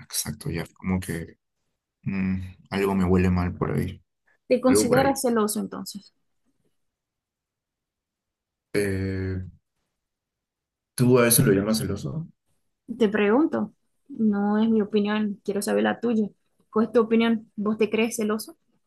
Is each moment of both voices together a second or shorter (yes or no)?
yes